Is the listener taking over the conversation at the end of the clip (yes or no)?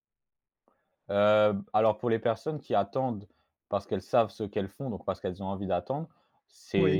no